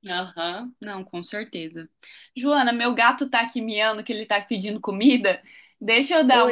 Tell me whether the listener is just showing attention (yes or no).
yes